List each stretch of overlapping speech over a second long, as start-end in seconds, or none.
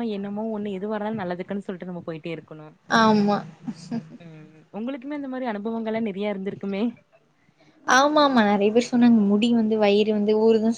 none